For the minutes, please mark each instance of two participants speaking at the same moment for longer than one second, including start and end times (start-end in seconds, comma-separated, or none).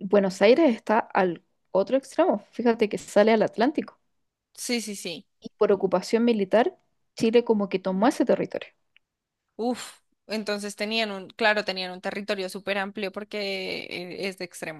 none